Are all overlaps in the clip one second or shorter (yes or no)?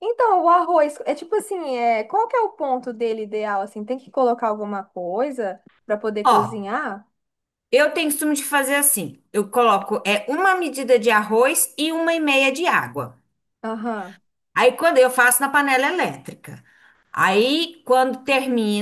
yes